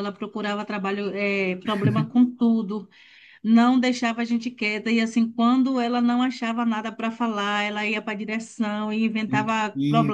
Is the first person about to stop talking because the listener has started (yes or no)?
no